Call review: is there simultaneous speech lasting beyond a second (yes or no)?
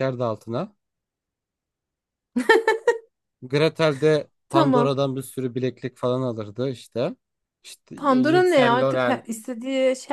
yes